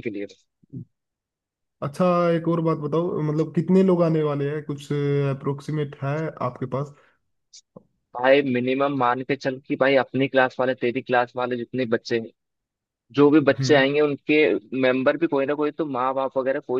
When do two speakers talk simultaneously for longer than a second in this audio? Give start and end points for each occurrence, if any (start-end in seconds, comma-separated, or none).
none